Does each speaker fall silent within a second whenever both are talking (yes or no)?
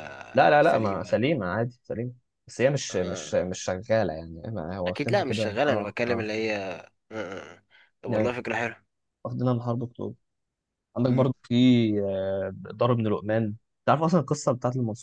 no